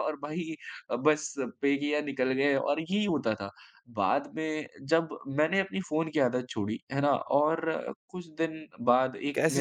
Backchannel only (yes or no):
no